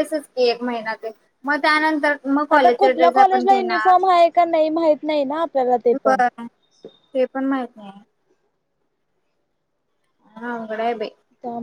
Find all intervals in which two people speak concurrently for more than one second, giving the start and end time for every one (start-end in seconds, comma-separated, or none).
2.5-4.0